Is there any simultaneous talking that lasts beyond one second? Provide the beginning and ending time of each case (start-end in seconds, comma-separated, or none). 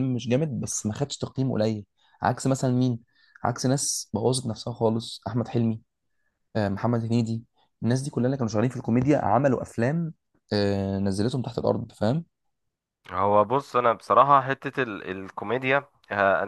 none